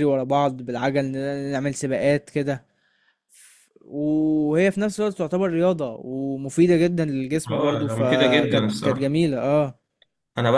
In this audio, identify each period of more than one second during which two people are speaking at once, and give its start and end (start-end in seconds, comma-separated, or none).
7.5-9.2